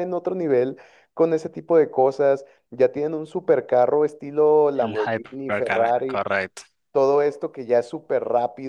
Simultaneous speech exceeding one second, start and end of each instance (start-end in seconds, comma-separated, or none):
4.8-6.2